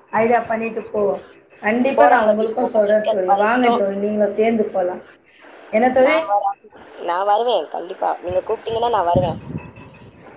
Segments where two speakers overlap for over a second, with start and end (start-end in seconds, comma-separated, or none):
2.0-3.8